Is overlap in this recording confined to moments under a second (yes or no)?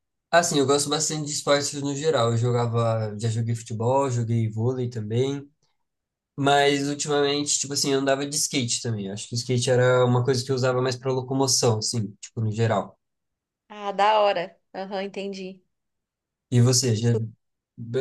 yes